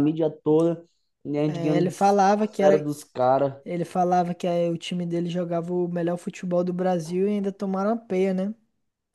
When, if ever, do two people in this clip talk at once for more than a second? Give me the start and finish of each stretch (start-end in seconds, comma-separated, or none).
1.5-2.9